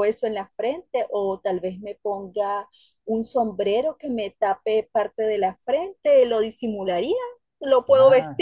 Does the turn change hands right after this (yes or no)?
no